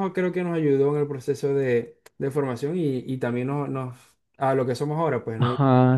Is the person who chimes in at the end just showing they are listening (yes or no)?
no